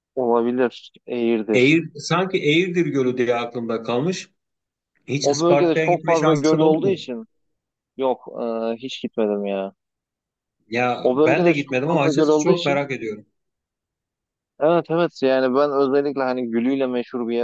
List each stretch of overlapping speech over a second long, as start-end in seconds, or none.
5.2-7.0, 11.0-12.8